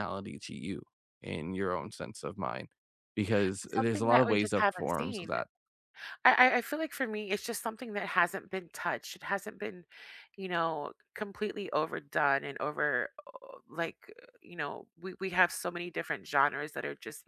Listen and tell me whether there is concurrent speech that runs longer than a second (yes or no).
yes